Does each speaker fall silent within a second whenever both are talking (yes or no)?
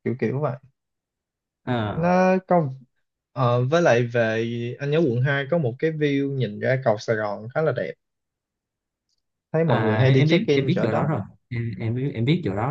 no